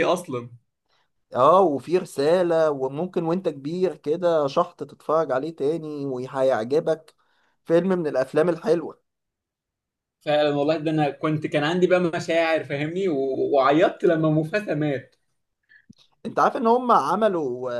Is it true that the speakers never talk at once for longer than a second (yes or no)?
yes